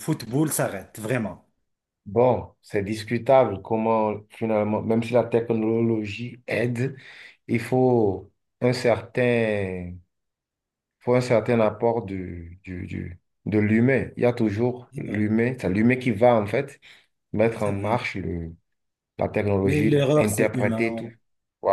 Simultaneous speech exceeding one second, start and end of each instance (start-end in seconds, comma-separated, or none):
19.6-21.0